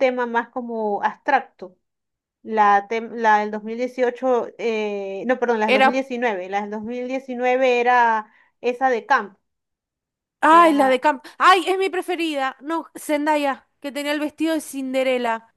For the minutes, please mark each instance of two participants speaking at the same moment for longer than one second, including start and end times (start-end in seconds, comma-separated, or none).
none